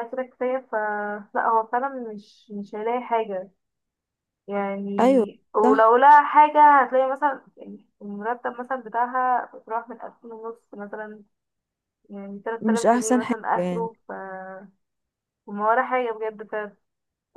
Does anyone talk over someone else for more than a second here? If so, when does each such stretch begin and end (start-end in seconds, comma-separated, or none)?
12.6-13.9